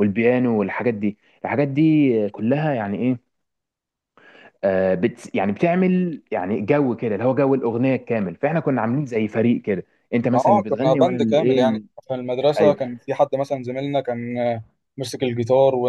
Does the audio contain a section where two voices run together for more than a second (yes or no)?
yes